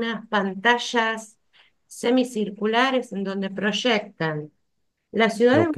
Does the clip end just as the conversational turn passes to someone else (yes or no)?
no